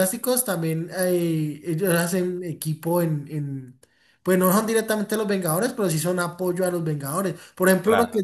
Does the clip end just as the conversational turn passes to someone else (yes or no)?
no